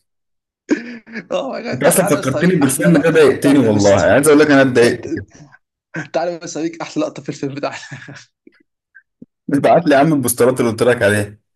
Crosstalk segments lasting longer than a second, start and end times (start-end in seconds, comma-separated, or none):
1.7-4.2